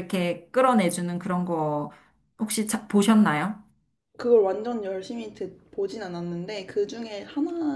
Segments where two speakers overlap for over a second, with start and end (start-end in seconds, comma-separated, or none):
none